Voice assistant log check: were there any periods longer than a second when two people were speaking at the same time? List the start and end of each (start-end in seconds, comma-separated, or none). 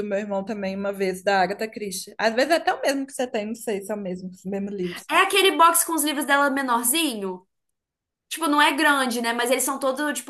none